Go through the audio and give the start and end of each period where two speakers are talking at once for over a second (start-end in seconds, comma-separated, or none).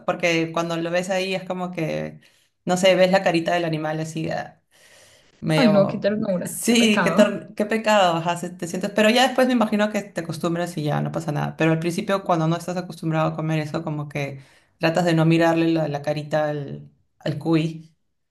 5.5-7.2